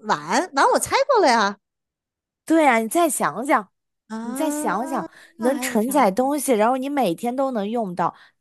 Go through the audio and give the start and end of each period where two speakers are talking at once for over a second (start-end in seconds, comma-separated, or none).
4.2-6.3